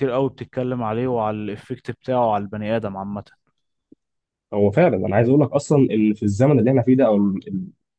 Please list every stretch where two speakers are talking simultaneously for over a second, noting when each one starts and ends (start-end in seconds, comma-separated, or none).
none